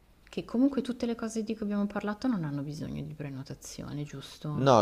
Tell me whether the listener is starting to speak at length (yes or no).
yes